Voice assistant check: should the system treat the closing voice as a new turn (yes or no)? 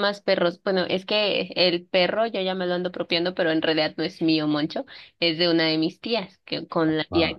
no